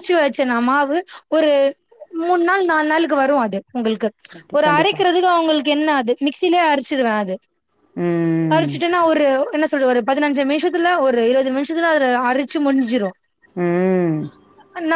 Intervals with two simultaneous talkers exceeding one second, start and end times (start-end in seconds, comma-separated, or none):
none